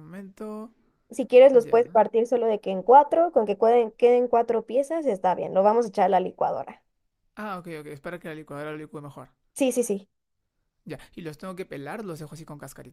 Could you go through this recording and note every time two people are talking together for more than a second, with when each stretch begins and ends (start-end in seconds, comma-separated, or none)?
none